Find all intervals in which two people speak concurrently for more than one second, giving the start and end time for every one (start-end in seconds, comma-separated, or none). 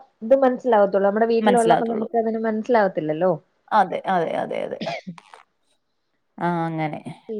none